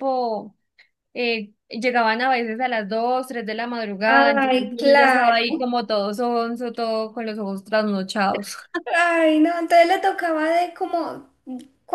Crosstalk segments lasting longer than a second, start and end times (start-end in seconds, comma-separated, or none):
4.1-5.4